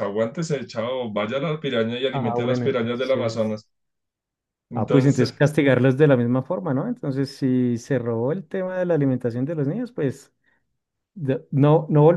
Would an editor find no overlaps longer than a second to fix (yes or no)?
no